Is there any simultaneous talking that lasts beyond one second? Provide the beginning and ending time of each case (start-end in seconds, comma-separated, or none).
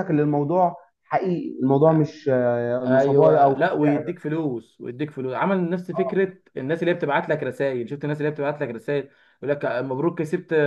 2.9-4.3